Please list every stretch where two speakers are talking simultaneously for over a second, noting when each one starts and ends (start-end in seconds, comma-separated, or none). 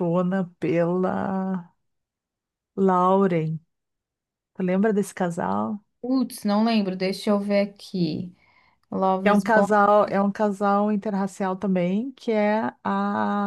none